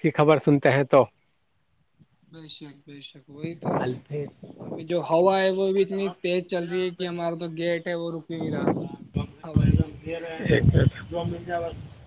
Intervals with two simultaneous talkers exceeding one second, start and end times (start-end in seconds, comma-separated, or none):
none